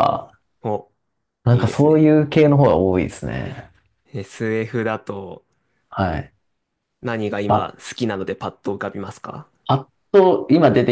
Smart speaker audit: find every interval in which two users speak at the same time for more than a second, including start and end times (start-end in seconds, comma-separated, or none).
none